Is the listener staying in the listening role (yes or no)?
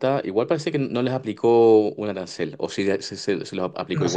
no